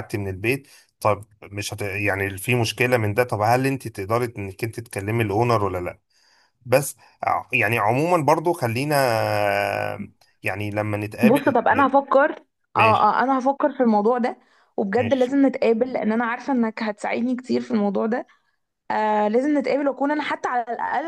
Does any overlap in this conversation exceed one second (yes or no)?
no